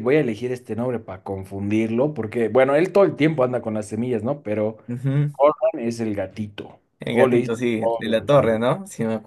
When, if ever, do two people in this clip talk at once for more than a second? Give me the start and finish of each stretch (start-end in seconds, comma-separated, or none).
7.0-8.6